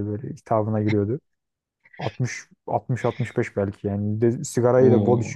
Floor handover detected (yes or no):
no